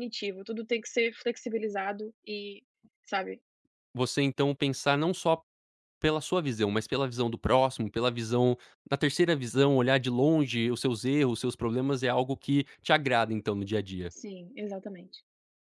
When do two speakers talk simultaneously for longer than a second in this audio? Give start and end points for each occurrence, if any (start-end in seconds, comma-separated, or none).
none